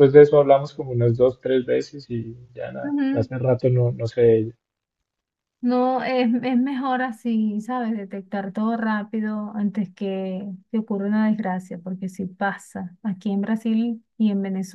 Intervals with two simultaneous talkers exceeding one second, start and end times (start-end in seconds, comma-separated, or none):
none